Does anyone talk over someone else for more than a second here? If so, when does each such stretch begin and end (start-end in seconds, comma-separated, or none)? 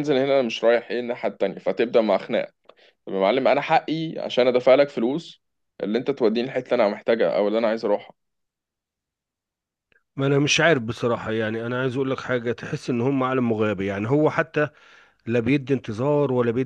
none